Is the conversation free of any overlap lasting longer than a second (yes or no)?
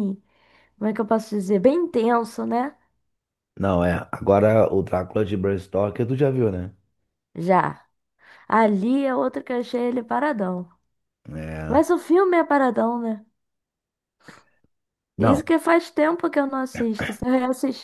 yes